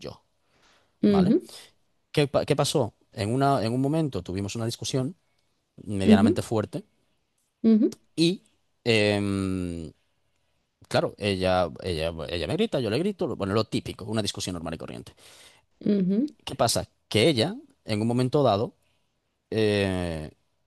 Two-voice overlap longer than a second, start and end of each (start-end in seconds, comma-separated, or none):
none